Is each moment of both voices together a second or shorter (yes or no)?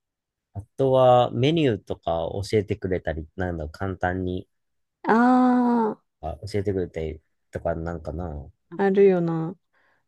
yes